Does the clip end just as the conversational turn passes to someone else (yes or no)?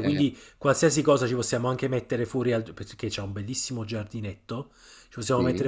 no